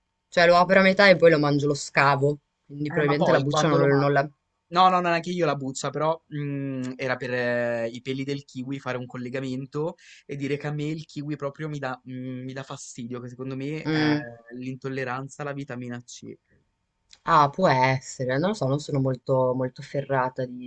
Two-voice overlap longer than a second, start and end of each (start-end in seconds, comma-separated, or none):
2.9-4.1